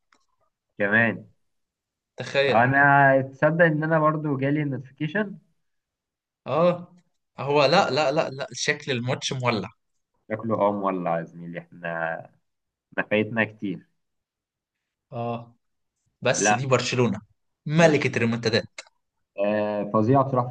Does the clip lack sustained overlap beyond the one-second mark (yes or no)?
yes